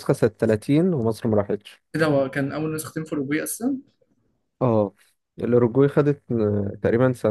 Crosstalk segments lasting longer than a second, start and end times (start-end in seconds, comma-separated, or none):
none